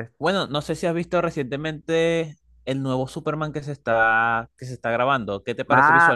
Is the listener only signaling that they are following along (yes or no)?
no